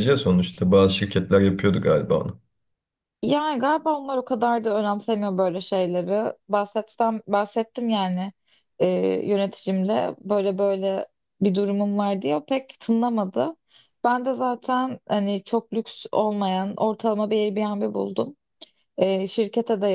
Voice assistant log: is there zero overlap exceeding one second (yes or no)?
yes